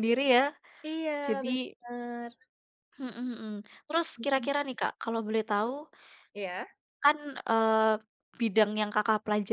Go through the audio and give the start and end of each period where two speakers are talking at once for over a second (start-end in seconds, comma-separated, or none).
none